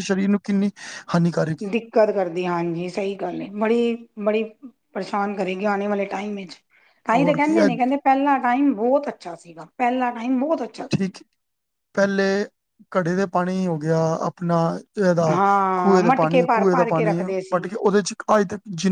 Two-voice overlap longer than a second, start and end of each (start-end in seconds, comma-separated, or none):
15.8-17.6